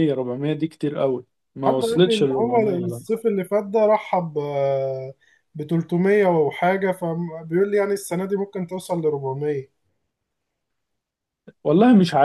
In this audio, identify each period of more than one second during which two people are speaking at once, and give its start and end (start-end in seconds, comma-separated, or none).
1.6-3.0